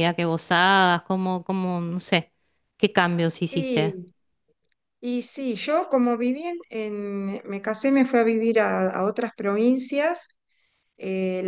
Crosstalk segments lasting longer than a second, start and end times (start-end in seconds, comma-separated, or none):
none